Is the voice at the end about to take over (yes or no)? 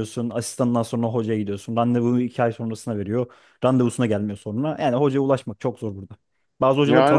yes